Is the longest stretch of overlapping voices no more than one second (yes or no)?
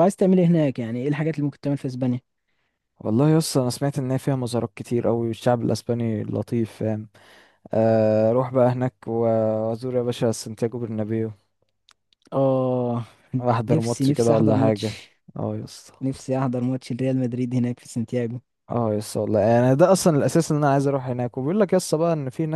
no